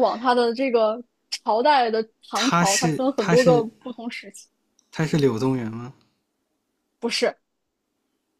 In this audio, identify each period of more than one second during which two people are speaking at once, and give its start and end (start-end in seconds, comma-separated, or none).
2.3-3.7